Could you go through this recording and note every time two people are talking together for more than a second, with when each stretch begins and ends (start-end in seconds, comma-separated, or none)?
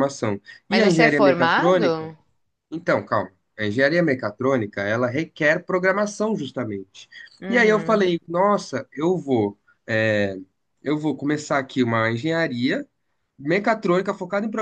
0.7-2.1